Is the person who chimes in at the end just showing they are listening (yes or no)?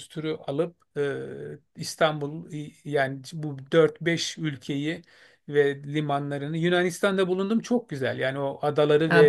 no